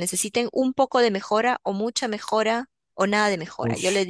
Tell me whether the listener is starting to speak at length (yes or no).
no